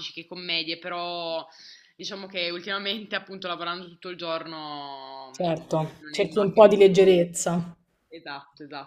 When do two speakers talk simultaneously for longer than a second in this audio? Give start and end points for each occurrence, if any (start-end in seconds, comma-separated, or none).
5.3-7.2